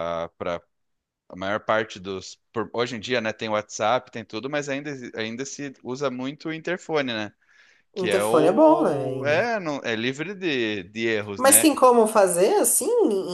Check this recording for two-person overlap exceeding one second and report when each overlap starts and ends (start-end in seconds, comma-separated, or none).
8.0-9.5